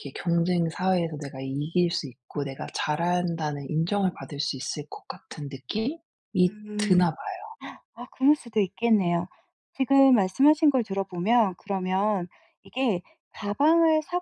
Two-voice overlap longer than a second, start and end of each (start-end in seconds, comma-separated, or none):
none